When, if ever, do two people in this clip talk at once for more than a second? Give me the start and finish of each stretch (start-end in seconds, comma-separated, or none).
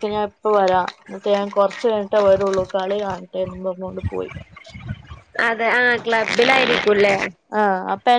none